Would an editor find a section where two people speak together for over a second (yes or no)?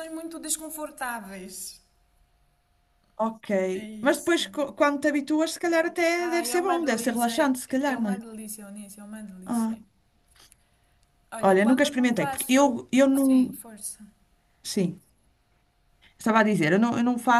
yes